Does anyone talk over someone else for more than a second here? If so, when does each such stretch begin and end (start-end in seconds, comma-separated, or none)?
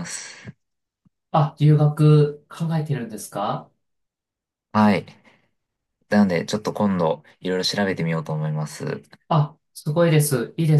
none